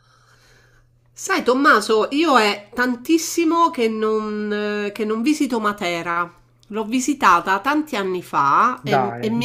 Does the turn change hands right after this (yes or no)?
no